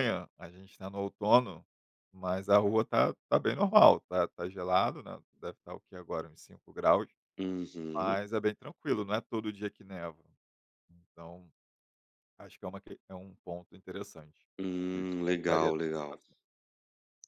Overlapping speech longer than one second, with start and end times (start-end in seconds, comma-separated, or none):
14.9-16.2